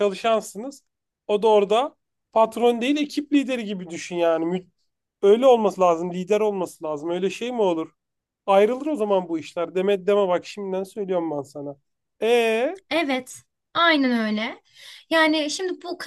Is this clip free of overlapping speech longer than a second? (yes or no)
yes